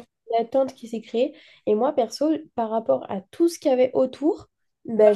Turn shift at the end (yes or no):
no